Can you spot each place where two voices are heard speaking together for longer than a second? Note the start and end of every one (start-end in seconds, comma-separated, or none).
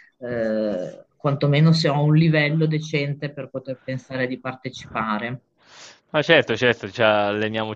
none